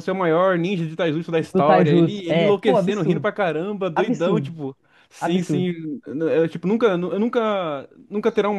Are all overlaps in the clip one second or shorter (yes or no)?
no